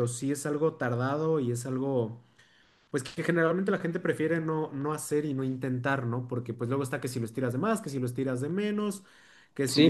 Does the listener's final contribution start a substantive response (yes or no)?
no